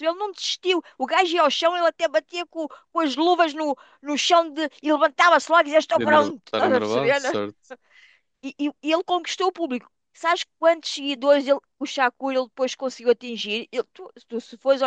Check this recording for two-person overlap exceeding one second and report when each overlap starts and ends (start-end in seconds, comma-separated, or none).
5.9-7.2